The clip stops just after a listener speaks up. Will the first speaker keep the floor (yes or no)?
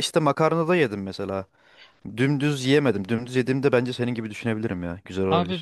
no